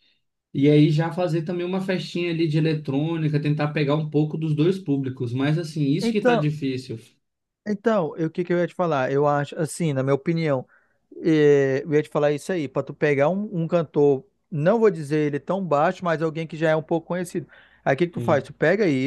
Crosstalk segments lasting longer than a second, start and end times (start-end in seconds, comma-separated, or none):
none